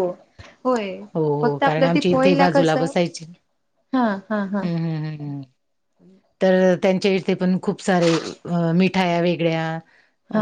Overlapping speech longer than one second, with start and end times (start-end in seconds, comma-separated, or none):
1.4-2.8